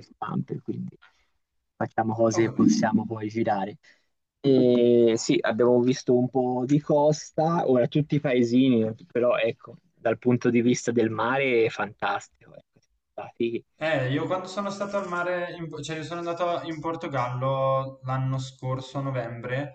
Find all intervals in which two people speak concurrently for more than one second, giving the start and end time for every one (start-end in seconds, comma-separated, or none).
none